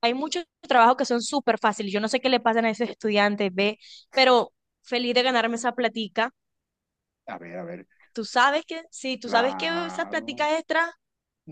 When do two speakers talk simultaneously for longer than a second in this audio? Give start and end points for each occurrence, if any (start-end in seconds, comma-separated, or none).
9.2-10.5